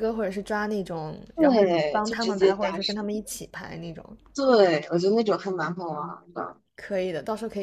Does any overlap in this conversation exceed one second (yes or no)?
yes